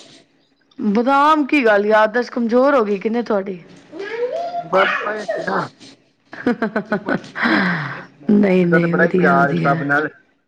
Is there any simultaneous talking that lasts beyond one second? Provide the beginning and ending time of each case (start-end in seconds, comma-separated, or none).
8.3-9.7